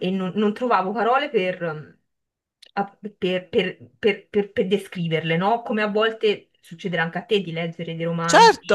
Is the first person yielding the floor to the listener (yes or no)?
yes